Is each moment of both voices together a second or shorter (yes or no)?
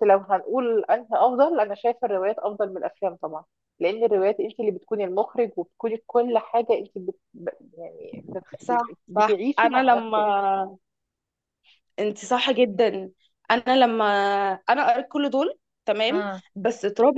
no